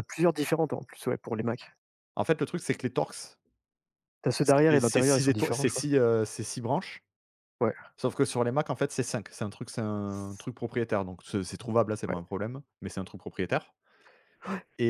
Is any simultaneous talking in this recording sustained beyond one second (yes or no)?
yes